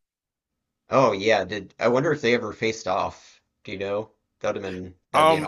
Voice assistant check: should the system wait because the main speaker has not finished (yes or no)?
no